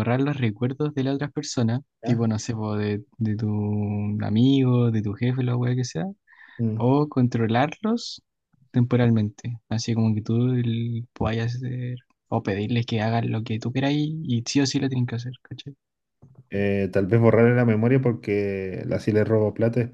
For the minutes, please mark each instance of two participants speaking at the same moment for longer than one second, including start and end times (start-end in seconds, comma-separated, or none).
none